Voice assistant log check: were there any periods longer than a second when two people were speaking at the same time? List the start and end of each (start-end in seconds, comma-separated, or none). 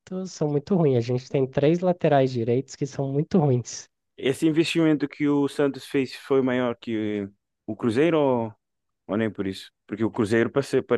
none